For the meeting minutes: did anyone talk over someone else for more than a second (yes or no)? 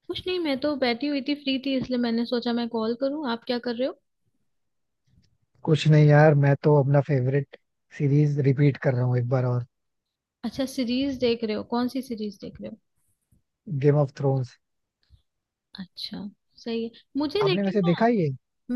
no